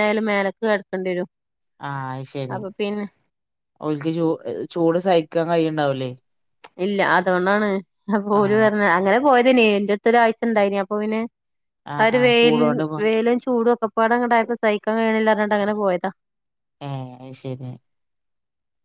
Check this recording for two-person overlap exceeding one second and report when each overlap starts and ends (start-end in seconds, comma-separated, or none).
none